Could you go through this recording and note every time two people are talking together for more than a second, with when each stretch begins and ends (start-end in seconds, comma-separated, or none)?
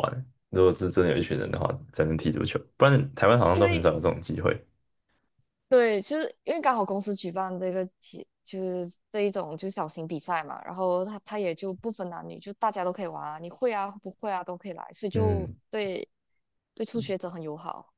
none